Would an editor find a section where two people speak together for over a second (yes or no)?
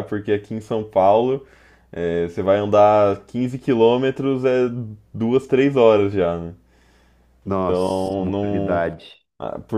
yes